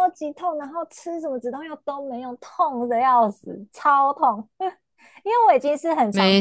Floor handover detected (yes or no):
no